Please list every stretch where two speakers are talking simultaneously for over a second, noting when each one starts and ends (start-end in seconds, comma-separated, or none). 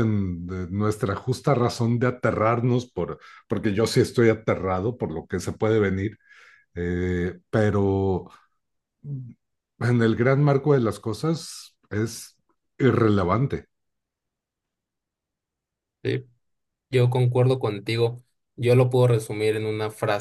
none